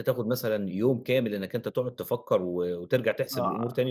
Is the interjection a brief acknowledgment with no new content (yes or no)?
no